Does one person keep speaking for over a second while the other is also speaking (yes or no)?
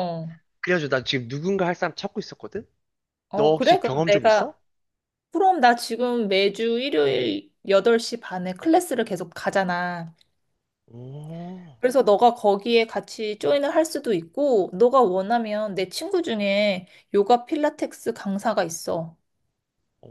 yes